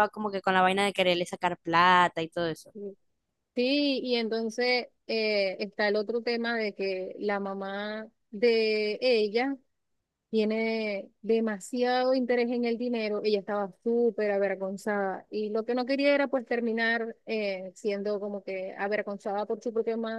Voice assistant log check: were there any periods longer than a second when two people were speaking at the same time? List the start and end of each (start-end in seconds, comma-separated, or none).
none